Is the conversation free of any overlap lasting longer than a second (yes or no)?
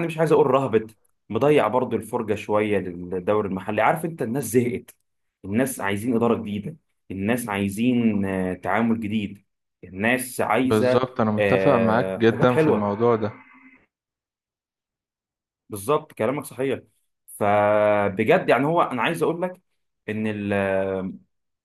no